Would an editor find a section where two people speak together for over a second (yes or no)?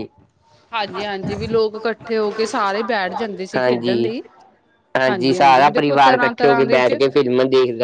yes